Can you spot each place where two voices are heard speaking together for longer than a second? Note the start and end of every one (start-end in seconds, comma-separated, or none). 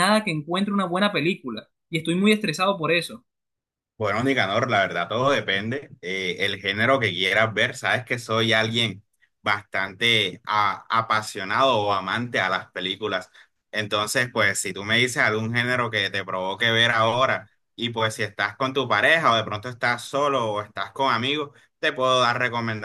none